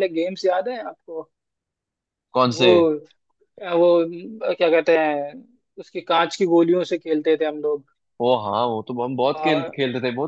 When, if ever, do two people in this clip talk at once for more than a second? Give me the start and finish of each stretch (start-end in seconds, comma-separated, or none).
none